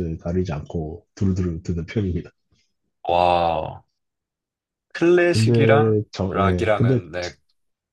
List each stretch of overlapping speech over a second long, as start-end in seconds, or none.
5.3-7.0